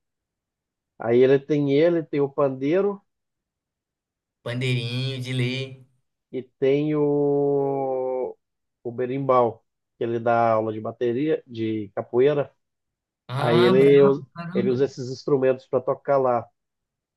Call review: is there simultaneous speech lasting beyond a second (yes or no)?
yes